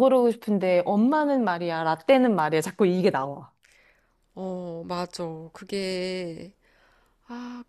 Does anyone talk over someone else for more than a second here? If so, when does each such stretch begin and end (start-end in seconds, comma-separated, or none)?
none